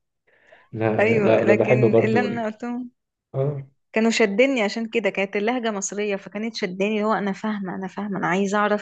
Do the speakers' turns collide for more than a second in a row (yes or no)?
yes